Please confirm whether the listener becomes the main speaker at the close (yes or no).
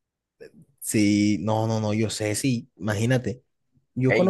no